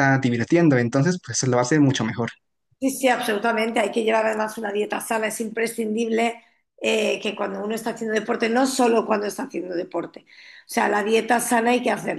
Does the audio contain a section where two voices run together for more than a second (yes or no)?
no